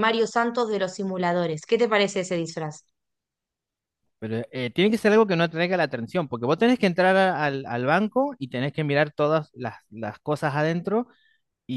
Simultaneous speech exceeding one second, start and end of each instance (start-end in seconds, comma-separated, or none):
none